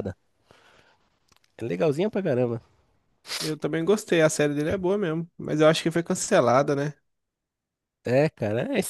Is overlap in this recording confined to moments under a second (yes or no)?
yes